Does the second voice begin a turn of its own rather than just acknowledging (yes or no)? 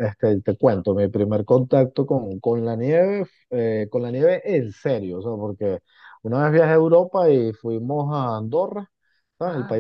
no